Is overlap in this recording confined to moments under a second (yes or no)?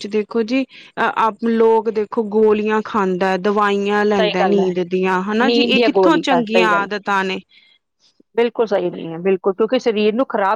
no